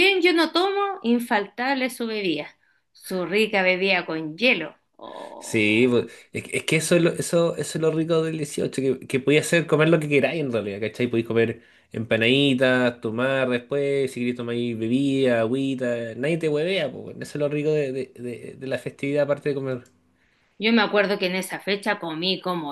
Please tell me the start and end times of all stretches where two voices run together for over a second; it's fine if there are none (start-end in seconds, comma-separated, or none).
none